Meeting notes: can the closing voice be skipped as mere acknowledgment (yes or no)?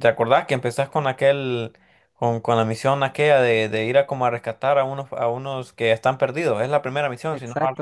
no